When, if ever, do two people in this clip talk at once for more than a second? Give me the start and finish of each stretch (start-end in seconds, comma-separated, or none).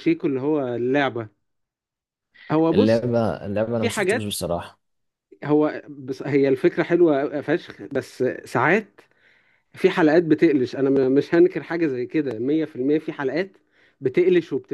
none